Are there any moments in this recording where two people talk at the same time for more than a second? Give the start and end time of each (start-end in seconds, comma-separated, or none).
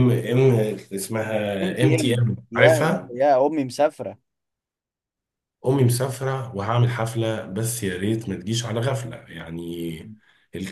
1.6-3.1